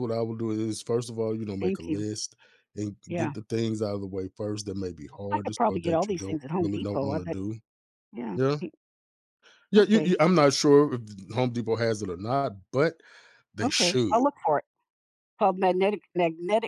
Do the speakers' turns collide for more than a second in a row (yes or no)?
yes